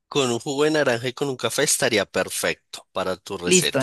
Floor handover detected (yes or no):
yes